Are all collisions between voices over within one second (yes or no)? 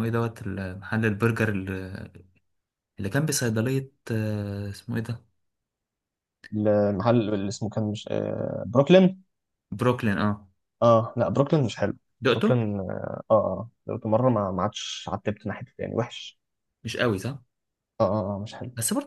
yes